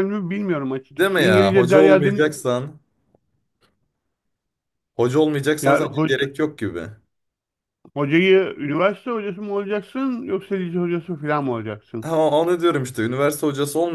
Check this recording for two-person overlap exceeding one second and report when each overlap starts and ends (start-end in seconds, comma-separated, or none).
0.9-2.2